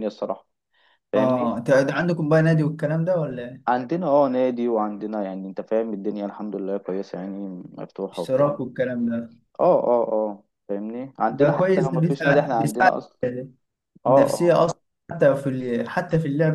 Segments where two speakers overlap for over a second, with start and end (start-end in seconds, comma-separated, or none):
11.3-12.9